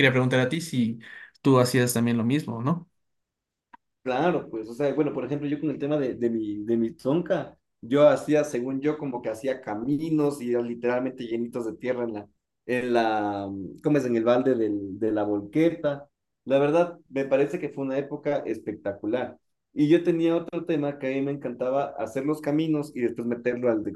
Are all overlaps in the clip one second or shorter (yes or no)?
yes